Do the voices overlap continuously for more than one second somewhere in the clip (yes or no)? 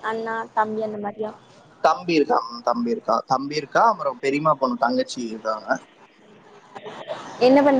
no